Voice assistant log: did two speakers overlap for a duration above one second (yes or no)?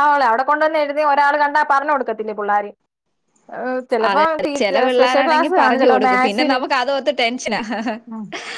yes